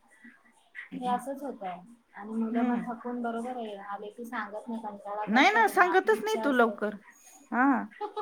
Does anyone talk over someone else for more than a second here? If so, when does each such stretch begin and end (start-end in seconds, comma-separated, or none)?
5.3-6.8